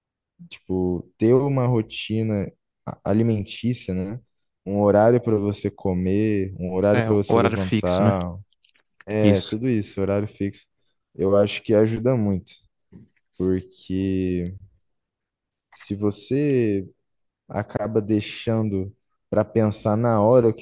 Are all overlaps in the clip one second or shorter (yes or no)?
no